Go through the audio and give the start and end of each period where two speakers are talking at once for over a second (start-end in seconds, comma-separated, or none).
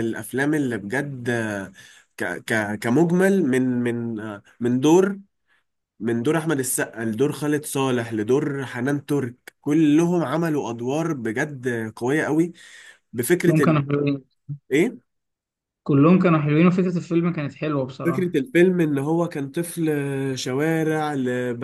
none